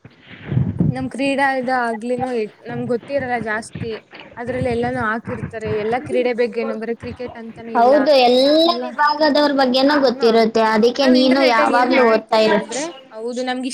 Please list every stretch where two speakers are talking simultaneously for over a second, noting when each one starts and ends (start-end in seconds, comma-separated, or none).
10.1-12.6